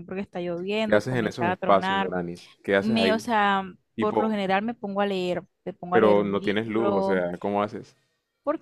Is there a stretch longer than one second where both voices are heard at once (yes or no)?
yes